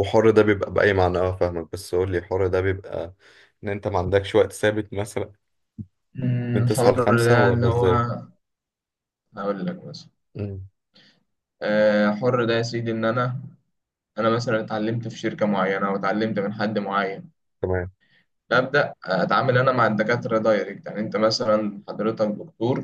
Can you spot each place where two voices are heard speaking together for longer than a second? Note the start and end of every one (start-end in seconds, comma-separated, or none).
6.5-7.9